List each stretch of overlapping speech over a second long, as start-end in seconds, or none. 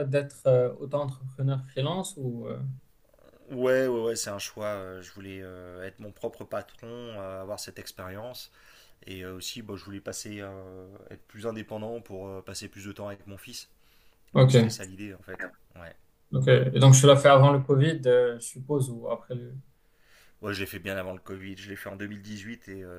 none